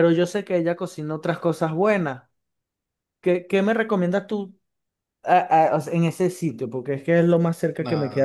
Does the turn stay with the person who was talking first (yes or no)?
no